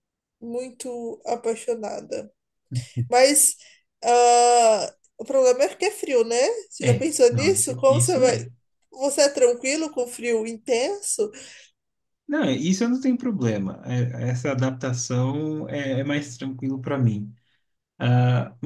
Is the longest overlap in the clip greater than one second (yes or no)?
yes